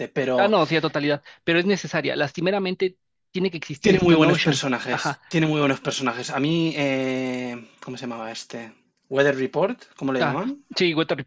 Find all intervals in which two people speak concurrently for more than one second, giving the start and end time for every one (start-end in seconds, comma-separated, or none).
3.8-5.2